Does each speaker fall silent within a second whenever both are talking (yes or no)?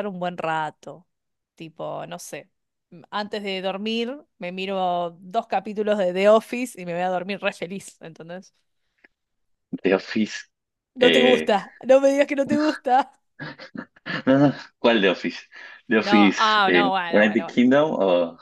no